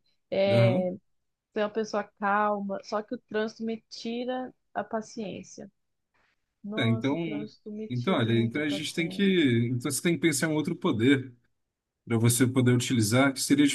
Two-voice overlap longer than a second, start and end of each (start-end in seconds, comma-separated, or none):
7.9-9.5